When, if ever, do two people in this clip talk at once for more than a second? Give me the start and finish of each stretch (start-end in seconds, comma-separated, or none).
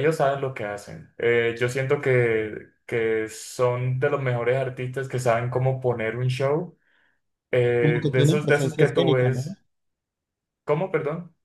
7.8-9.4